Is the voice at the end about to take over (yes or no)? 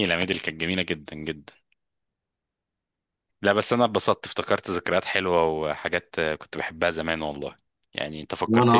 no